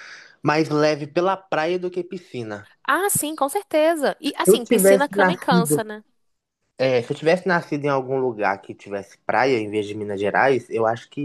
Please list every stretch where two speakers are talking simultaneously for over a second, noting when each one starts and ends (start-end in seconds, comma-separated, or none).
4.5-5.8